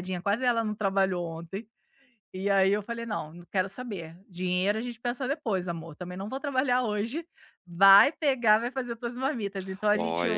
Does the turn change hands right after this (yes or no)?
yes